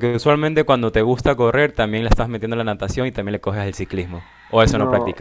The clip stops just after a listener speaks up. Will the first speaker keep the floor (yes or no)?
no